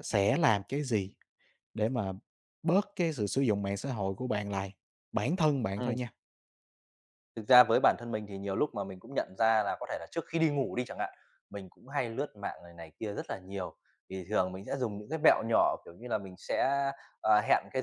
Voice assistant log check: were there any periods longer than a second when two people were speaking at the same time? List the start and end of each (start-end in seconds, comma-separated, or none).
none